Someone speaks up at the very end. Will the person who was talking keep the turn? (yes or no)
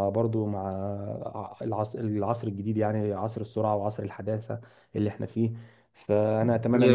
yes